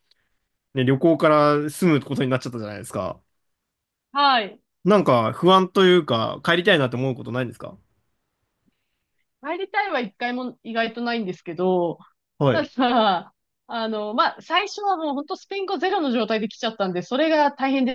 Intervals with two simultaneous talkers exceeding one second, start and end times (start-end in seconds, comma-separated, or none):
none